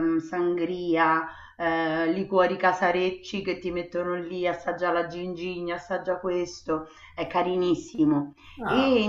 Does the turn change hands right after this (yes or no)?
no